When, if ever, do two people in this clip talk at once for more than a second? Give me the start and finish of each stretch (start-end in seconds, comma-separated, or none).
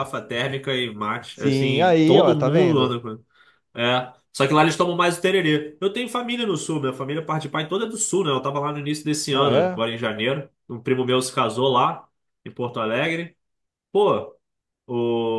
1.3-3.0